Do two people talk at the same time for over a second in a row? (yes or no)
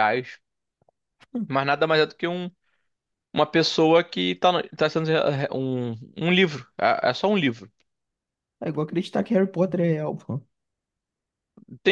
no